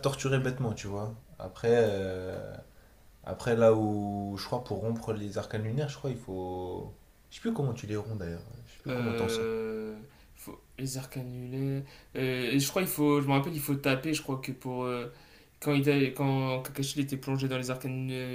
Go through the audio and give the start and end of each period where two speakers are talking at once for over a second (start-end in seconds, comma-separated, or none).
none